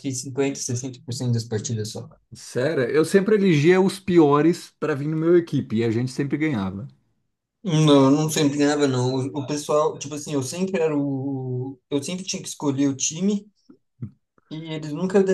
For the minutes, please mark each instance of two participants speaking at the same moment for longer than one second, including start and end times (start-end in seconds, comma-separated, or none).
none